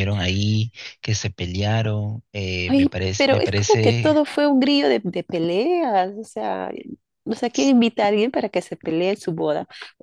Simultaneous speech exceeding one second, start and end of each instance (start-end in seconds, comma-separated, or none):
2.6-4.1